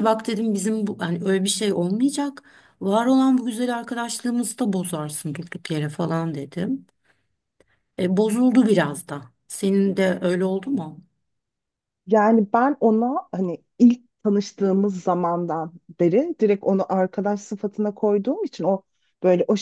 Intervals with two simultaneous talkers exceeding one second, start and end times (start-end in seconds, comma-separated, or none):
none